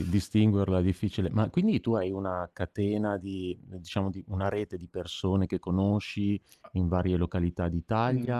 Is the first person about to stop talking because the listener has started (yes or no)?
yes